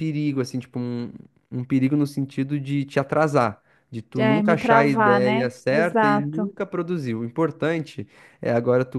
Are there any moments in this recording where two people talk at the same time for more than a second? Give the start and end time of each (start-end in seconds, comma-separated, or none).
4.2-6.5